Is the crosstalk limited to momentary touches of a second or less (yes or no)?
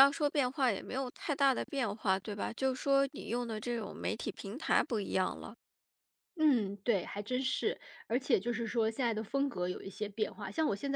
yes